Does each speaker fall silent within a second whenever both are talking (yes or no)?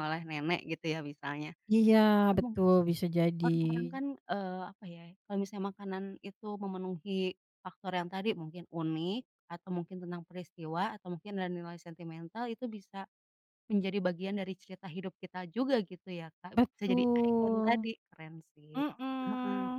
no